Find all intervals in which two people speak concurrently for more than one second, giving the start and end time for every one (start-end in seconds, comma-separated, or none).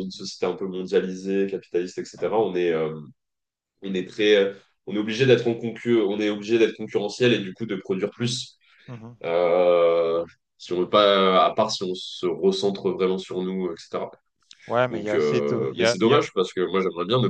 14.9-16.2